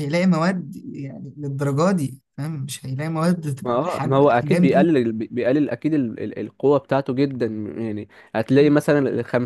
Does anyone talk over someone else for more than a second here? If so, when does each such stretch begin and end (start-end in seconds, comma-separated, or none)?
3.6-4.9